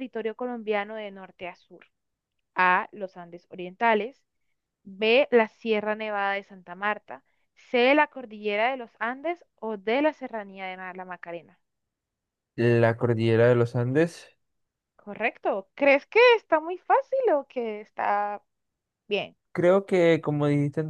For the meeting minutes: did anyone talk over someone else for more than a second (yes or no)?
no